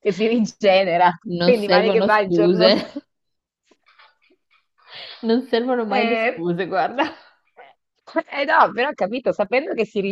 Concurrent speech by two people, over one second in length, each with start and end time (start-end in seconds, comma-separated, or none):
1.2-2.7